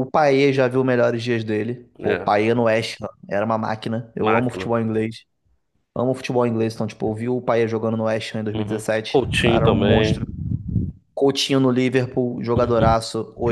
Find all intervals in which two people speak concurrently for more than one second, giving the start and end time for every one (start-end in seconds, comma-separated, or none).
8.6-10.2